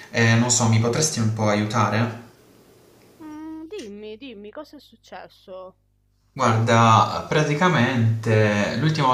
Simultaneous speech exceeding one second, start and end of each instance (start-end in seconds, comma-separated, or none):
none